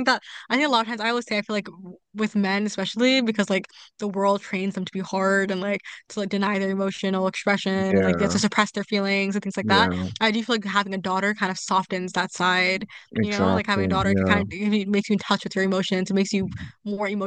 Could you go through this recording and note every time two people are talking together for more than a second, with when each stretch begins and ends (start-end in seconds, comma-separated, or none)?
13.2-14.4